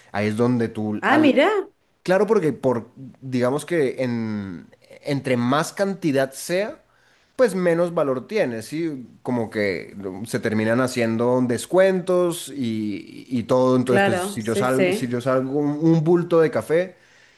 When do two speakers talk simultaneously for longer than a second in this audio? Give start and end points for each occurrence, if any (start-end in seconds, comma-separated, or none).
13.8-15.2